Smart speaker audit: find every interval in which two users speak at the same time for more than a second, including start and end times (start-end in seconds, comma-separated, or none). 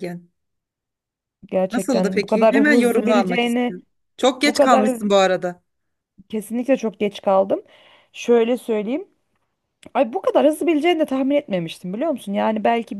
1.7-3.8